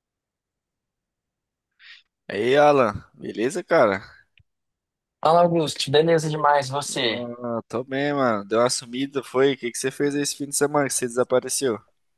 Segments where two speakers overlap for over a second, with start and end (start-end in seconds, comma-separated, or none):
none